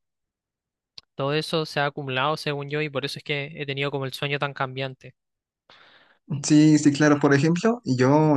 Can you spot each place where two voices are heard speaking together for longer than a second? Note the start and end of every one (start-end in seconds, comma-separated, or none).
none